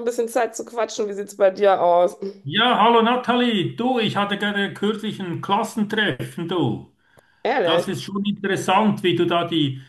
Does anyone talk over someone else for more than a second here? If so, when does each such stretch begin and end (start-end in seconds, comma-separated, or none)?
none